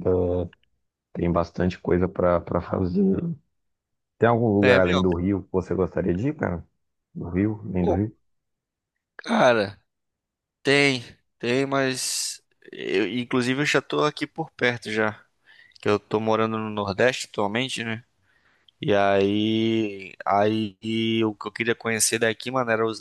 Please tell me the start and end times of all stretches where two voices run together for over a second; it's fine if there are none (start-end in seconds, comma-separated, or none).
none